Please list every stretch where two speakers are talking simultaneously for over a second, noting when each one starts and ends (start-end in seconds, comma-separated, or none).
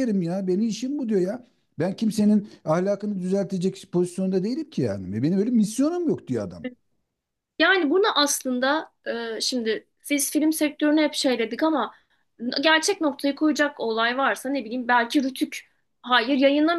none